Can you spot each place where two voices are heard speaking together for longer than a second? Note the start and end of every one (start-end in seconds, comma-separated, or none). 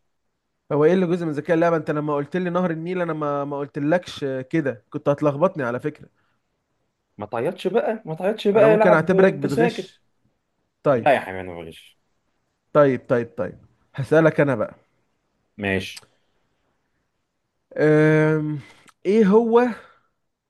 8.5-9.9